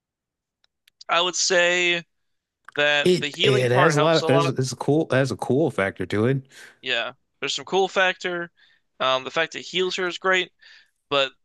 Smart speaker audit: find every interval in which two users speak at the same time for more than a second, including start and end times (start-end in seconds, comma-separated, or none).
3.0-4.5